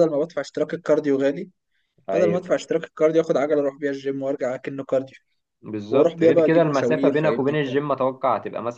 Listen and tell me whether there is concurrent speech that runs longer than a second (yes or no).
yes